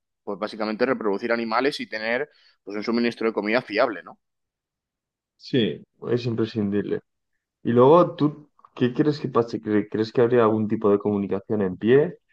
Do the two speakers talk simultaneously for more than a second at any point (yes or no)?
no